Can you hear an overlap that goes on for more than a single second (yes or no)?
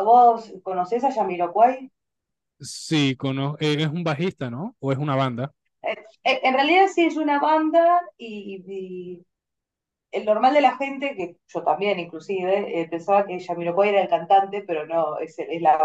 no